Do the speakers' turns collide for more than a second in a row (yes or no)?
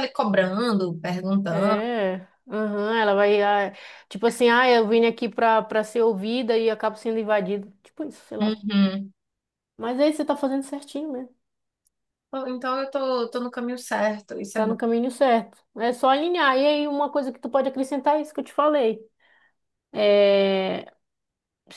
no